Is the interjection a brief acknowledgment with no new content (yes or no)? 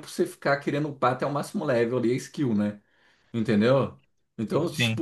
yes